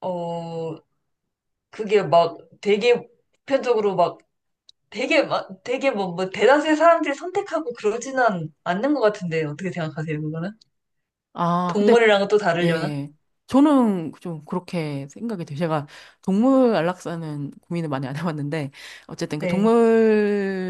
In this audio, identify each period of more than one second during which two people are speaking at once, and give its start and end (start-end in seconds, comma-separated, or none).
none